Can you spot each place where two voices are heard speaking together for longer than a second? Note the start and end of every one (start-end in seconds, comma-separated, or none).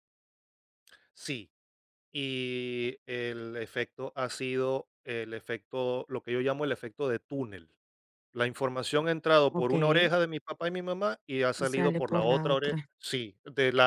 11.6-12.9